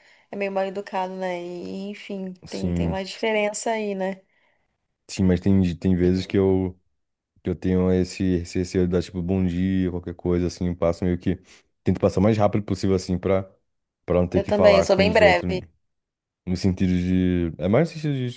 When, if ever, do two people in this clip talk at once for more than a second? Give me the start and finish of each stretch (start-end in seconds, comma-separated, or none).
14.3-15.6